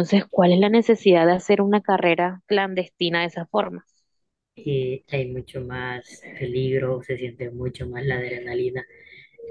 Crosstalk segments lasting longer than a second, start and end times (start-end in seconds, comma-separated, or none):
none